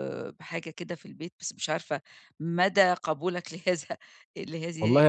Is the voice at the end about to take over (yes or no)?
yes